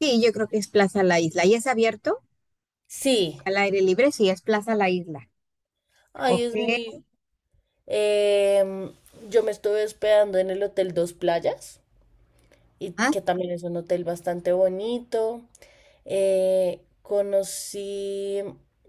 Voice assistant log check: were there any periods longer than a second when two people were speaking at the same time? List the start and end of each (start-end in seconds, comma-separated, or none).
none